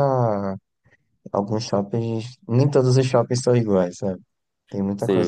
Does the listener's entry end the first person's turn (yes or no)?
yes